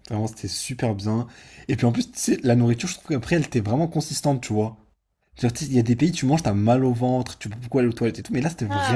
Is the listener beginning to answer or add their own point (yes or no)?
yes